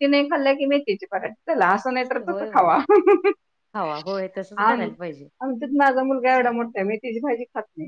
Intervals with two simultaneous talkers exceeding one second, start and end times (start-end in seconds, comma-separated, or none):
none